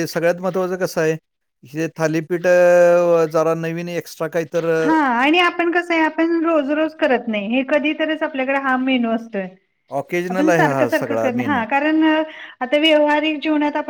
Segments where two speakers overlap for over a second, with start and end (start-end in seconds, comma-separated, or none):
10.3-11.6